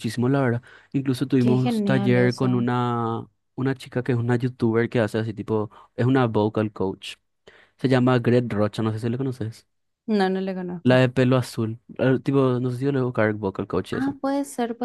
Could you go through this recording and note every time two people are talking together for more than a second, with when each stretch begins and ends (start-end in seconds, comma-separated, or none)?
1.4-2.7